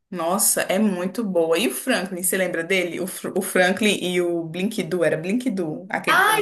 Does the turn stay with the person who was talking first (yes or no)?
no